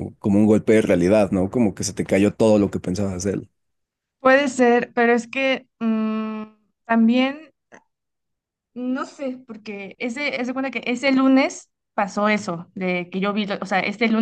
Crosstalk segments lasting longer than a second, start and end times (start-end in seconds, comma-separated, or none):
none